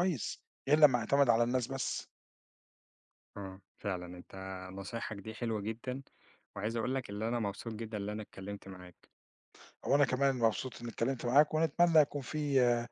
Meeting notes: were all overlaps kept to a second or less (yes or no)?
yes